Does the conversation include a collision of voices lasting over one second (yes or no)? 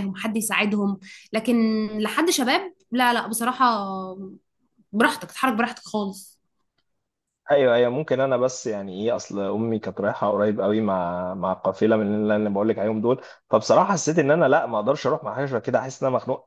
no